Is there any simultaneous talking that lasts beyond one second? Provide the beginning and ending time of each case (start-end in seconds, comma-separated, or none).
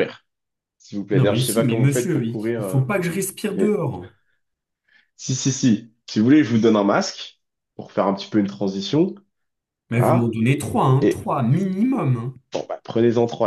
1.1-2.8